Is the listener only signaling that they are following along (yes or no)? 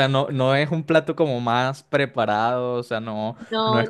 yes